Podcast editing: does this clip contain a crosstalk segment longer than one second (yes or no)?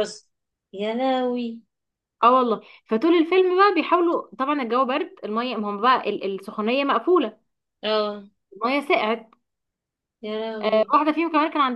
no